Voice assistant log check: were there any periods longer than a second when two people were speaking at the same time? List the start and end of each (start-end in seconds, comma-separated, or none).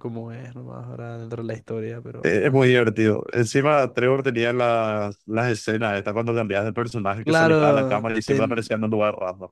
7.2-8.6